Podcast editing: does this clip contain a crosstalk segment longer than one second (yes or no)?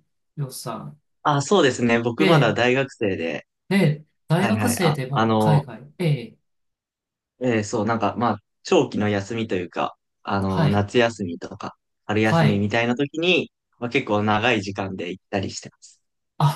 yes